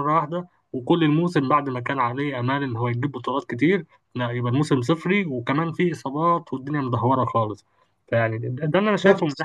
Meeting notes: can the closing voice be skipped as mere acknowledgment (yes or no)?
no